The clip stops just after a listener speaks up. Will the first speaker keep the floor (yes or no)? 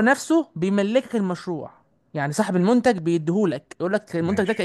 yes